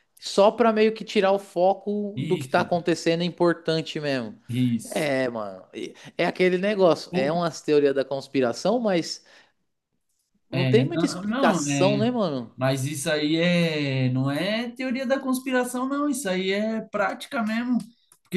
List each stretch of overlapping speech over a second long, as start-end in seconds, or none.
10.5-12.0